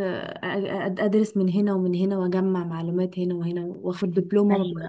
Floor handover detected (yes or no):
no